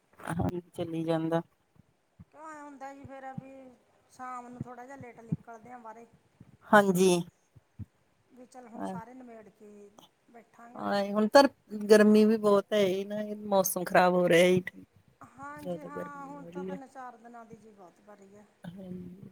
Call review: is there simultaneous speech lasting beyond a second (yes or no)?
no